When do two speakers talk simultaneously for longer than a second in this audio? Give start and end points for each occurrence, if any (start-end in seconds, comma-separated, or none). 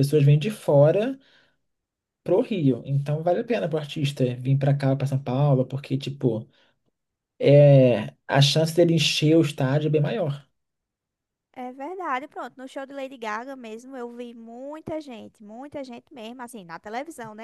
none